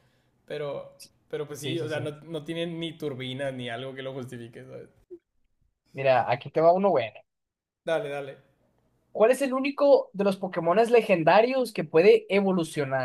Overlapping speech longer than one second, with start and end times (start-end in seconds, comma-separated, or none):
none